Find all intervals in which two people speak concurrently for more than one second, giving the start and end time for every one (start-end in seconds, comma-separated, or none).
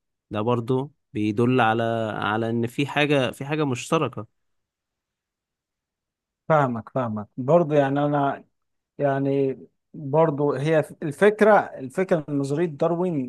none